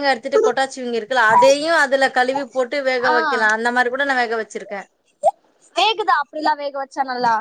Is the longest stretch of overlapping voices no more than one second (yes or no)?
yes